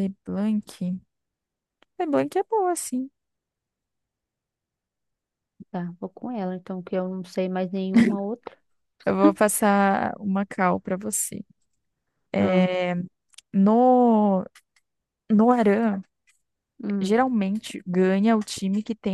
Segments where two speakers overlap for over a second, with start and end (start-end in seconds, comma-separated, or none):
none